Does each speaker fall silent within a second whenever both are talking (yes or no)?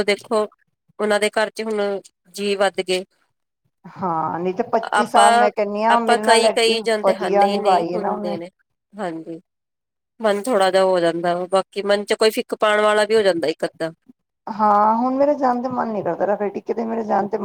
no